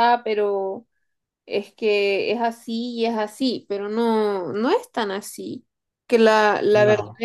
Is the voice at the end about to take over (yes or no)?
no